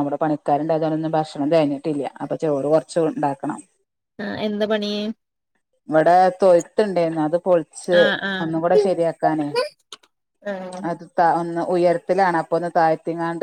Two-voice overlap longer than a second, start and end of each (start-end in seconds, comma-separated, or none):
none